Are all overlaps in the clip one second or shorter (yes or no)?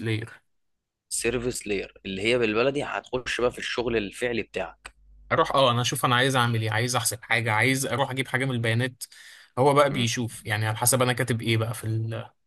yes